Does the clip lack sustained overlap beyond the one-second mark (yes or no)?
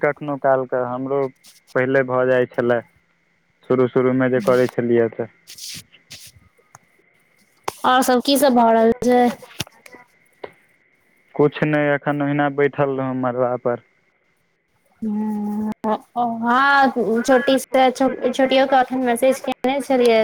yes